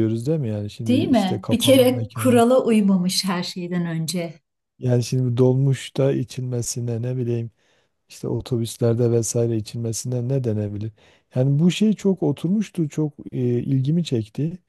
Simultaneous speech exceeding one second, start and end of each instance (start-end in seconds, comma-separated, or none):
0.9-2.4